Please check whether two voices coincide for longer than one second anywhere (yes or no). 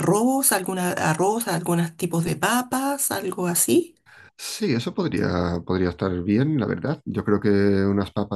no